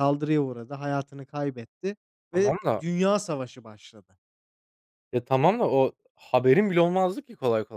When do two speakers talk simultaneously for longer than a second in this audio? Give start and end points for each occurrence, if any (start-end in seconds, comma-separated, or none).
none